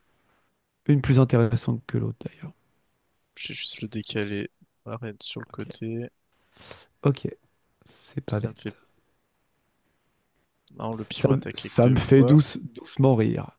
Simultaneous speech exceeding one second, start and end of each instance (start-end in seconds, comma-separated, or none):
11.1-12.4